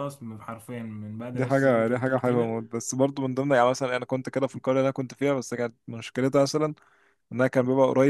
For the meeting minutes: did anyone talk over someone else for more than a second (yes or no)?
yes